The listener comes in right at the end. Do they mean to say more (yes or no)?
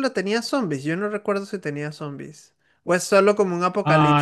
yes